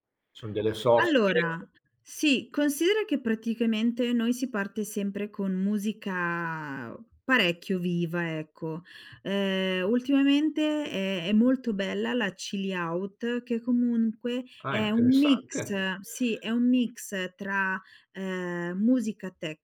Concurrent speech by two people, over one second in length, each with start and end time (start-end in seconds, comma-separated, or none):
14.6-15.9